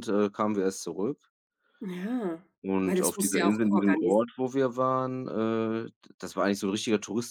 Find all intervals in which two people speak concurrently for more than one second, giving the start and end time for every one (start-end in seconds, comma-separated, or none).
2.8-4.3